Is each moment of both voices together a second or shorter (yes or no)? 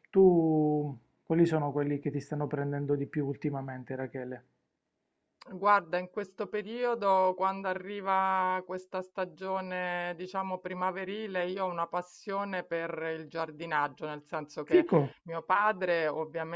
yes